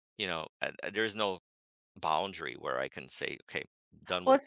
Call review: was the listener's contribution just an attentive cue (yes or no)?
no